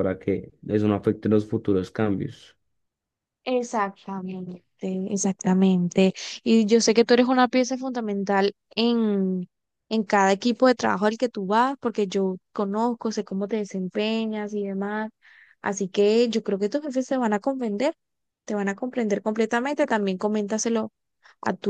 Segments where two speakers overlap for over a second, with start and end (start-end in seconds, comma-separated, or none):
none